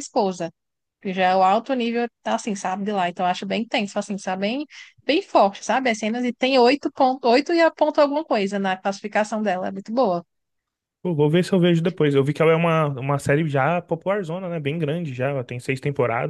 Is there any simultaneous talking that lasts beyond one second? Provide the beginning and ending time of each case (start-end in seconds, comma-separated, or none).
none